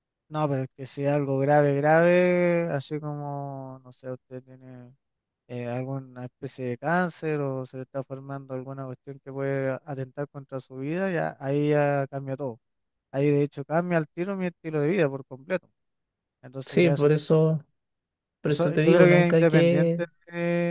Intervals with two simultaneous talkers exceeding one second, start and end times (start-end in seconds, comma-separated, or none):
18.4-20.0